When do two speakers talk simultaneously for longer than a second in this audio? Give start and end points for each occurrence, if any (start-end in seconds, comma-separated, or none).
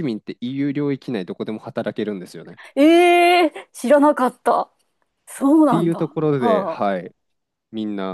5.4-7.0